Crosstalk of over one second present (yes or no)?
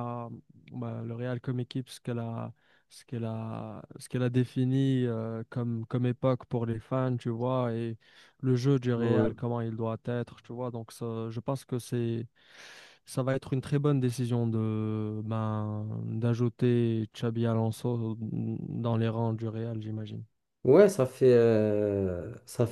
no